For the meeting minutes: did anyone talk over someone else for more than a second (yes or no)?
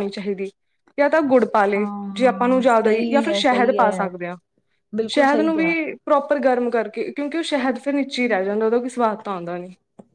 yes